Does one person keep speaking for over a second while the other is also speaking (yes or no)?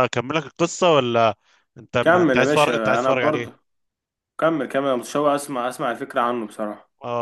yes